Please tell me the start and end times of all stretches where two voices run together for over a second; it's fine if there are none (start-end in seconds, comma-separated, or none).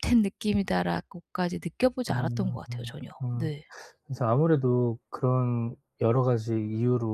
none